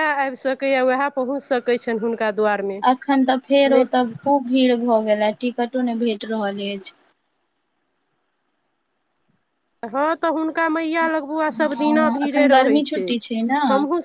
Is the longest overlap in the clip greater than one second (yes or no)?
yes